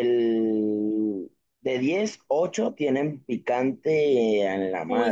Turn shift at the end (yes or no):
yes